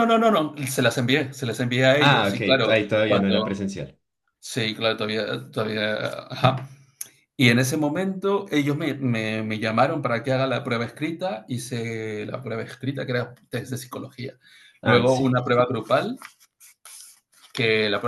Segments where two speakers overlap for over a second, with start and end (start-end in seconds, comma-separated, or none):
2.0-3.5